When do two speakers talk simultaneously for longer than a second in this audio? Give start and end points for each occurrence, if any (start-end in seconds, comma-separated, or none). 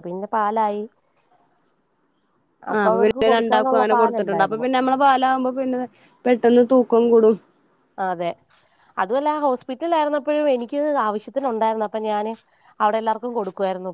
3.0-4.7